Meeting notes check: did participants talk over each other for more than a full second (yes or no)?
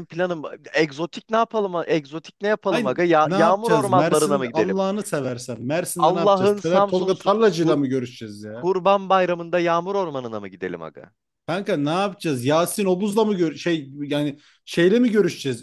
yes